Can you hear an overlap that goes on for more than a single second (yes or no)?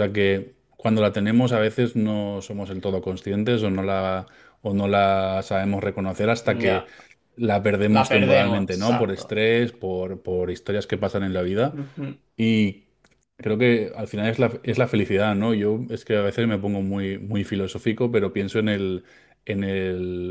yes